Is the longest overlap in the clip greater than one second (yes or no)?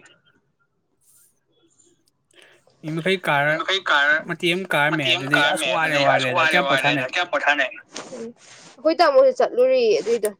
yes